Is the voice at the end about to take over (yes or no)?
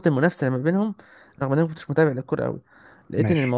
no